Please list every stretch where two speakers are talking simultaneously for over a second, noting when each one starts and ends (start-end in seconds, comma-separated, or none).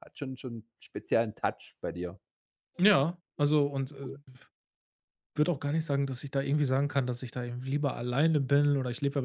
none